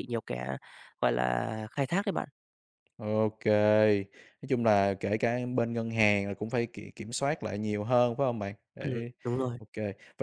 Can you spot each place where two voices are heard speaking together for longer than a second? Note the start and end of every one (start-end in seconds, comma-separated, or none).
none